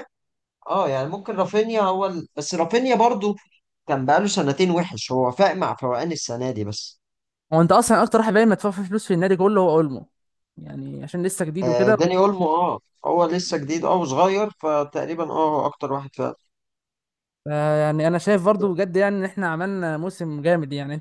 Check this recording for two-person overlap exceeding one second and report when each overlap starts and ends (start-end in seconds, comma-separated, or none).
none